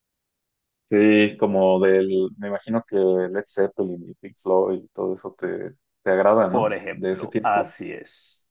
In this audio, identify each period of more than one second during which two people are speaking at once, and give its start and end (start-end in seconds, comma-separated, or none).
6.5-7.8